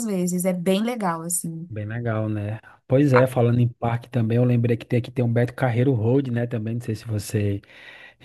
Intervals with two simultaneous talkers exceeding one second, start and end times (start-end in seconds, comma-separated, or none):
none